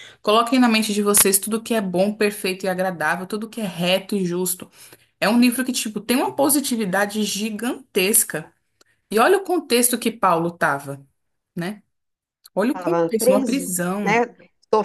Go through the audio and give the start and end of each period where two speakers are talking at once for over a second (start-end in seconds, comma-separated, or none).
12.8-14.2